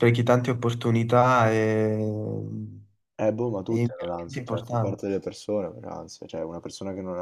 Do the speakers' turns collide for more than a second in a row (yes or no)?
yes